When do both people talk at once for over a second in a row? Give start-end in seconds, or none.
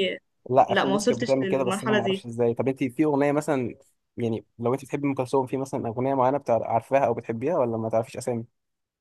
0.6-2.2